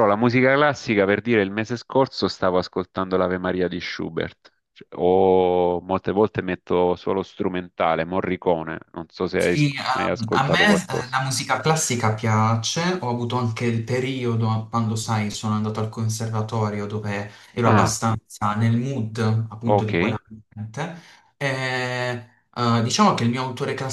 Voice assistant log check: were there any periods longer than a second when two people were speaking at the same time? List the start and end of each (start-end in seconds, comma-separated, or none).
9.4-11.2